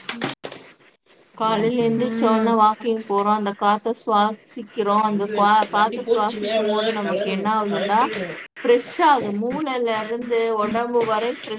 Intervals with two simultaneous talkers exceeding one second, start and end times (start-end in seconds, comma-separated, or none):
5.1-8.0